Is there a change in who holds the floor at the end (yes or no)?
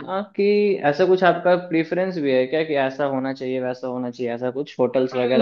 yes